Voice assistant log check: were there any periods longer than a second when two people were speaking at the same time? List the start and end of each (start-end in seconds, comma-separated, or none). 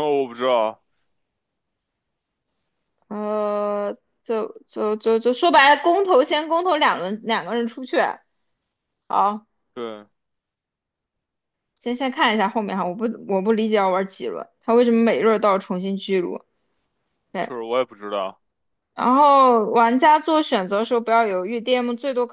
none